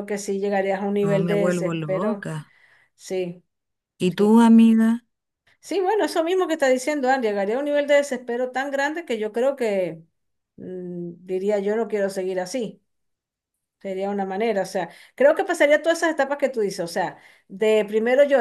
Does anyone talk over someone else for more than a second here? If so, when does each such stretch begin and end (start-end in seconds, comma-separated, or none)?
1.0-2.3